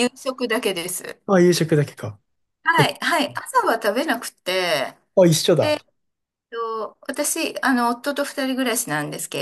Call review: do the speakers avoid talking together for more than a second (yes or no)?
yes